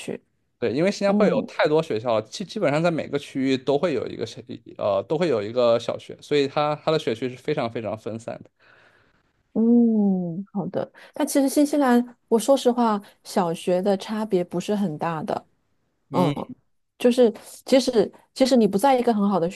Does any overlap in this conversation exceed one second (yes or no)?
no